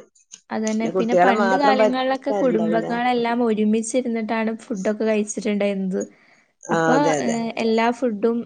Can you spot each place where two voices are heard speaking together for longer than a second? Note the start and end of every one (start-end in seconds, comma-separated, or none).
1.0-2.9